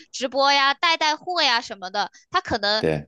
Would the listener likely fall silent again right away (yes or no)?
yes